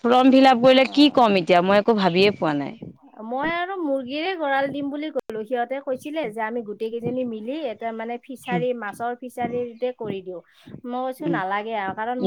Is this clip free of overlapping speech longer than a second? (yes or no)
yes